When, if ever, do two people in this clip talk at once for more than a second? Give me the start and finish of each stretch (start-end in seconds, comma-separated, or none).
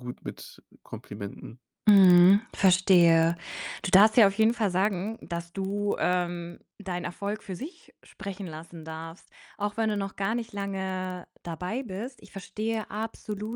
none